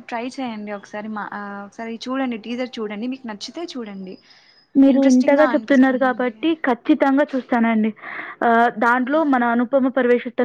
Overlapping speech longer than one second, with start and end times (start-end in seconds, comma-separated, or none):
4.9-6.3